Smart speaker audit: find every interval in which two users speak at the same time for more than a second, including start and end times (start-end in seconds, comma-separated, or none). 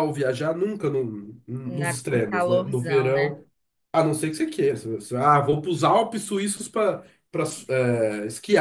1.6-3.4